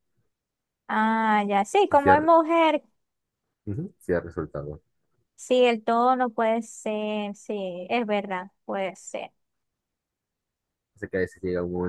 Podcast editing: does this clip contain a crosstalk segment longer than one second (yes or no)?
no